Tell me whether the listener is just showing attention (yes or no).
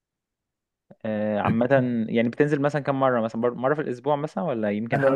no